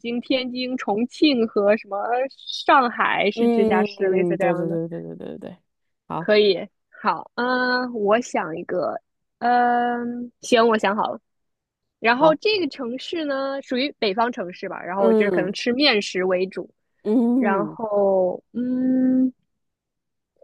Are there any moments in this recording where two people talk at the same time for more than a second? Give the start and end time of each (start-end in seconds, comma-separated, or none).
3.3-4.8